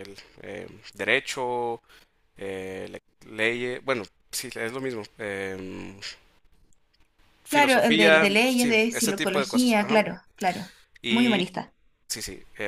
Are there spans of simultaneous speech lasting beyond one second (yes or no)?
yes